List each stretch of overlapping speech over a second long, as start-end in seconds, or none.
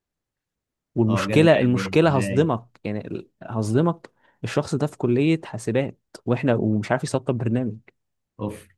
1.1-2.5